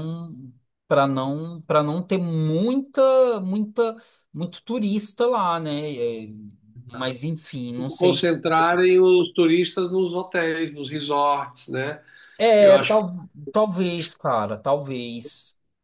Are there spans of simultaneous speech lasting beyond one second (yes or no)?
no